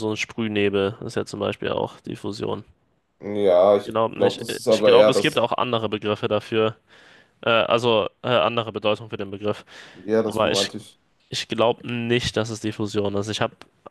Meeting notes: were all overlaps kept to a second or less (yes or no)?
no